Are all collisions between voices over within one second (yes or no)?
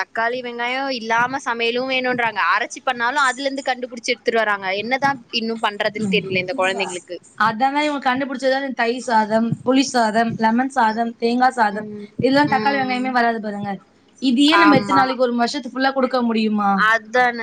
yes